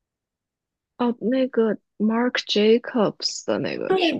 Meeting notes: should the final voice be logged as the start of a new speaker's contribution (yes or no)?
yes